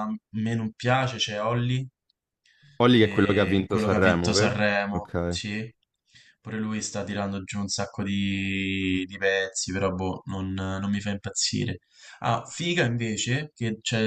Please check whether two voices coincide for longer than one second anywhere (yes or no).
yes